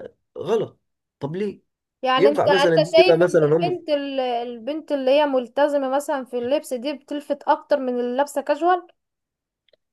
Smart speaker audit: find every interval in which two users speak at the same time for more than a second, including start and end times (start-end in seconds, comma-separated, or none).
2.2-3.8